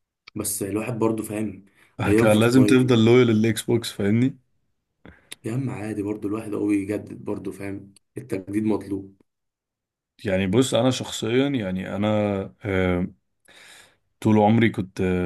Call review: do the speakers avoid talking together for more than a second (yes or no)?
yes